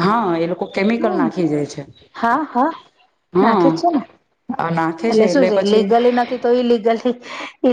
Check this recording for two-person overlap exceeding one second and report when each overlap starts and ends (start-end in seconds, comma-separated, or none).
none